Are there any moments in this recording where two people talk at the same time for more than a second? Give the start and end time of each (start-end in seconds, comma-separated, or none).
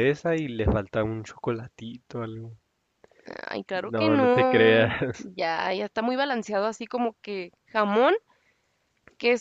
3.8-5.3